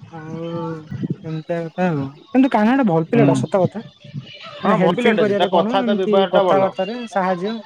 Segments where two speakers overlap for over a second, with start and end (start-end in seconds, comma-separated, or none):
4.6-6.7